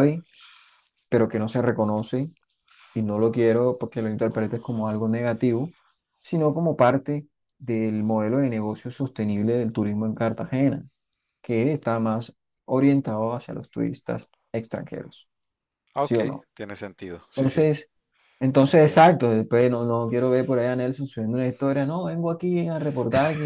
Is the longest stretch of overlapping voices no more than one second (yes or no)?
yes